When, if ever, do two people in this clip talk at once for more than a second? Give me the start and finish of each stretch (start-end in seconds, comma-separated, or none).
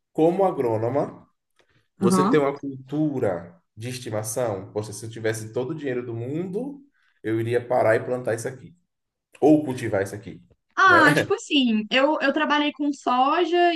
none